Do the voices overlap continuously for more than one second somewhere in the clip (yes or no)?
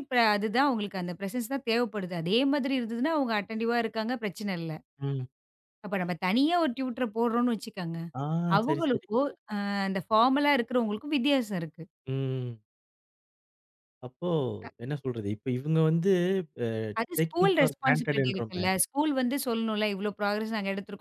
yes